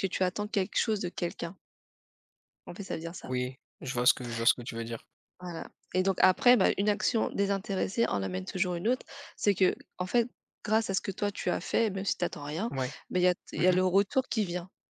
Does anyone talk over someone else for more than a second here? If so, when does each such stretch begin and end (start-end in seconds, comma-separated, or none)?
none